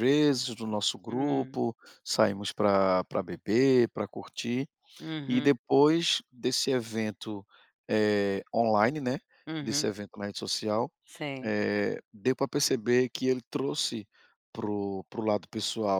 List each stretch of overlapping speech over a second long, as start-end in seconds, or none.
none